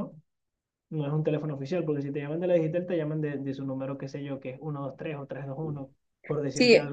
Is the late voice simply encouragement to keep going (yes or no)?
no